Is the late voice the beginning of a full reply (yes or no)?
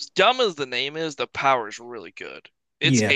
no